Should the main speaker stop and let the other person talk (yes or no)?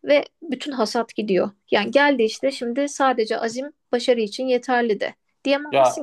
no